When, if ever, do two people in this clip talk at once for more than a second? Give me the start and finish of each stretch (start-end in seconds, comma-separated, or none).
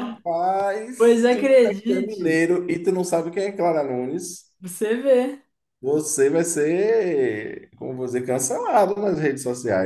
1.0-2.4